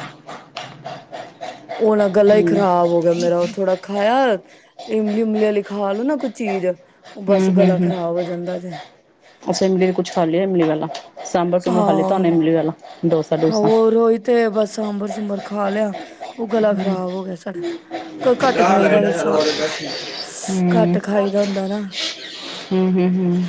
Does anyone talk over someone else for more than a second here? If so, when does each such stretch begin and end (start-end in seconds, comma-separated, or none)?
none